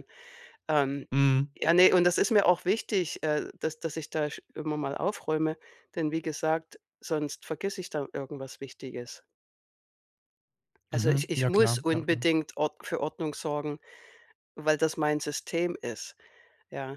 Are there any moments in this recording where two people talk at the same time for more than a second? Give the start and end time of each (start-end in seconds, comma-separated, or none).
10.9-12.2